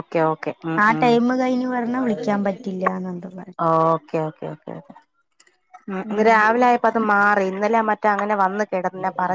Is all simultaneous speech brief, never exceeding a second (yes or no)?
yes